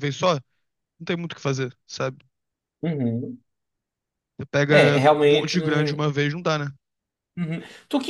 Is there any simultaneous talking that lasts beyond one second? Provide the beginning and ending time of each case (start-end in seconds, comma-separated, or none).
4.7-6.1